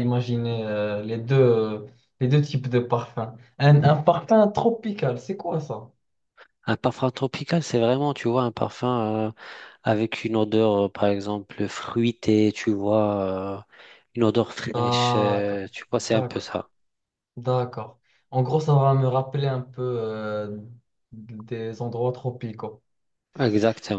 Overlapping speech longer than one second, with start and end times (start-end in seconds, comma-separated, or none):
14.7-16.5